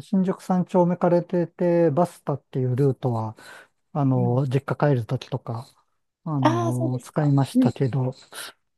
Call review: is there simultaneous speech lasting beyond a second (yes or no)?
yes